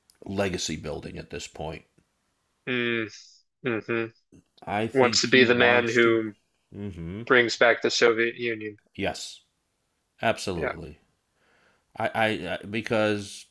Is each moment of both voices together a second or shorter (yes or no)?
no